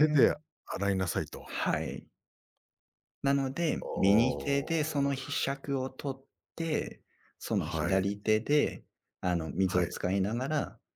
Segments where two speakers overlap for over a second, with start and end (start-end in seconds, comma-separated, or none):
3.8-5.1